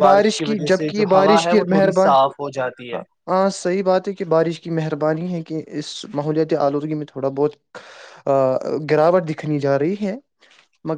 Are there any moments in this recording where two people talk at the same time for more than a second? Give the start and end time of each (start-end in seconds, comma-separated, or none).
0.5-3.0